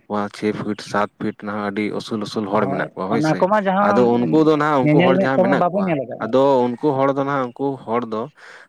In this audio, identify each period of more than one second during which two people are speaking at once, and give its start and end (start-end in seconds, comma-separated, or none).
2.5-4.1, 4.8-6.3